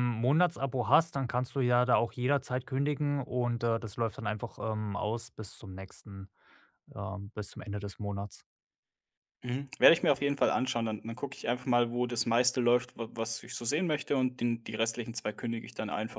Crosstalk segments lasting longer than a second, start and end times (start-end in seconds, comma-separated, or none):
none